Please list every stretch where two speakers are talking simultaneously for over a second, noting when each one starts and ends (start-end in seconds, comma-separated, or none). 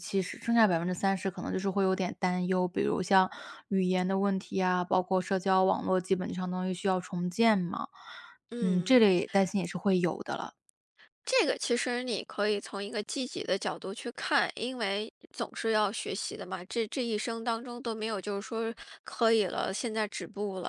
none